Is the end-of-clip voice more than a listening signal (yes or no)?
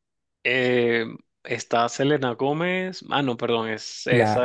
yes